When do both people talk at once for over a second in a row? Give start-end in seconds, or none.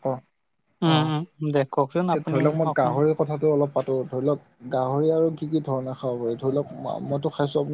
0.8-2.9